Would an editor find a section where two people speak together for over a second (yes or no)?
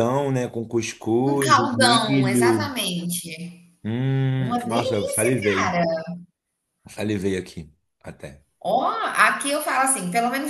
yes